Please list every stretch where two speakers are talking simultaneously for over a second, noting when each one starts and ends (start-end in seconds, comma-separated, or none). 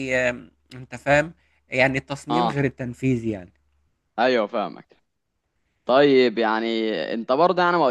none